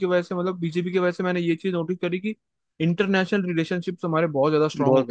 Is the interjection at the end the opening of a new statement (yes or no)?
yes